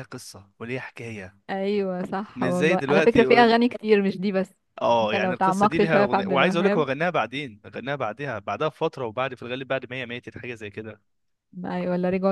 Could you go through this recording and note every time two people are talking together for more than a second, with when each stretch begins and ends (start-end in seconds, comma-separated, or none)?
2.4-3.6, 4.9-6.8